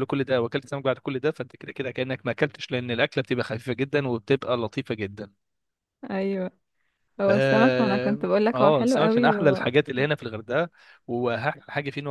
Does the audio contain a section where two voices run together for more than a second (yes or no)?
yes